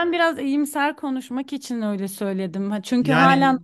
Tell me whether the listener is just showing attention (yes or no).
yes